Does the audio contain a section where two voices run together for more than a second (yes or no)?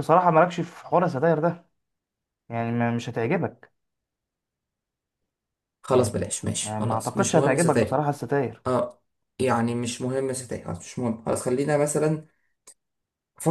yes